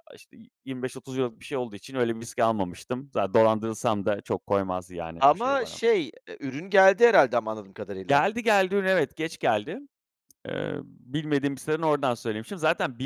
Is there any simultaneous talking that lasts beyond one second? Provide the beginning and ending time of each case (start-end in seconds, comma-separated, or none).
none